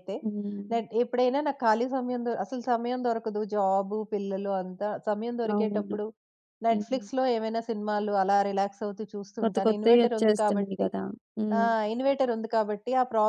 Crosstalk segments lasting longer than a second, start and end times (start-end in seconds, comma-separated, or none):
9.4-10.9